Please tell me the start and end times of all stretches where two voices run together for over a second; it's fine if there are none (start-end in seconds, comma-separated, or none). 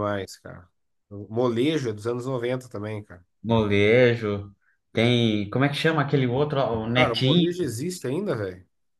none